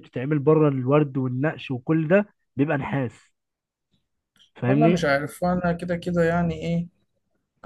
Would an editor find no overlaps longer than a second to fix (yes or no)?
yes